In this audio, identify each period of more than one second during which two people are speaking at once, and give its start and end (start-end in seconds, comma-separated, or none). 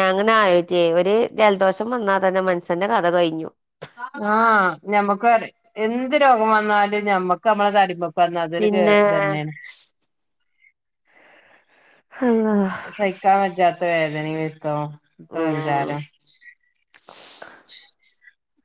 none